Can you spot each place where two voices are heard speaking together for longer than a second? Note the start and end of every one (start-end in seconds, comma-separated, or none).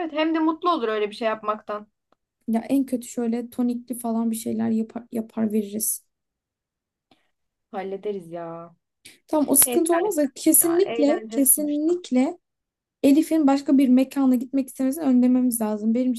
10.6-12.0